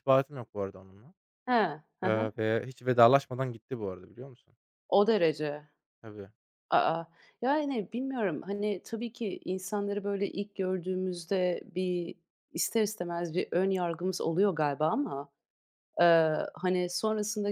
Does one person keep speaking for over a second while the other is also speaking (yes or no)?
no